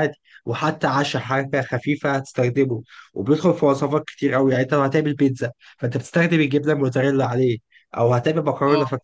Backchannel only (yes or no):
yes